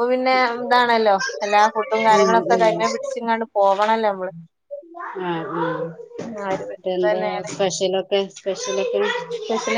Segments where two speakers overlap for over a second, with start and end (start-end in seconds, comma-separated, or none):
2.1-3.4